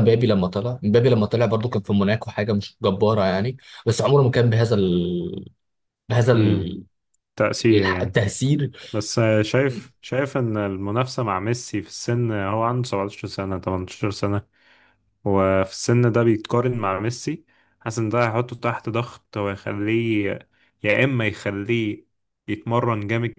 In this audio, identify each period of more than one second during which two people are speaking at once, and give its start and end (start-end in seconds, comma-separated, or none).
none